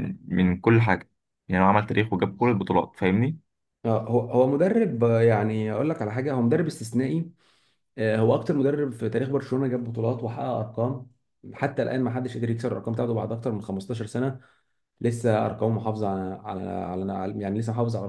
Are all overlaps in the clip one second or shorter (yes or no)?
yes